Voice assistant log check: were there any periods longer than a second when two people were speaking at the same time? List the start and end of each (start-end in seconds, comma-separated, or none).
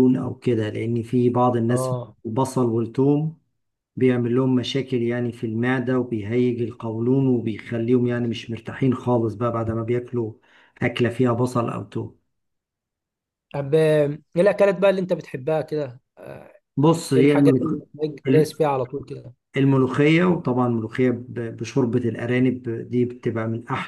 none